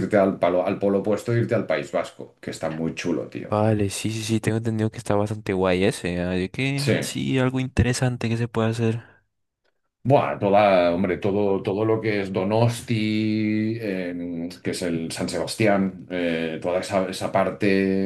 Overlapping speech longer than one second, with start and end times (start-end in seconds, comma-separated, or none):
none